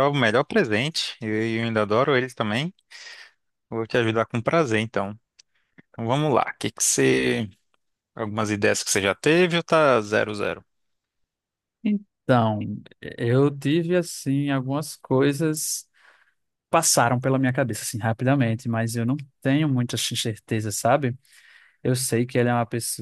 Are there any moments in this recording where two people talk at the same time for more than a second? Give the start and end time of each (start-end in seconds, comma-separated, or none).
none